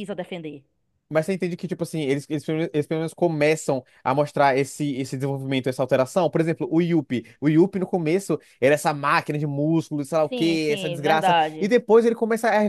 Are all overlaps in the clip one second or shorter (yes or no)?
no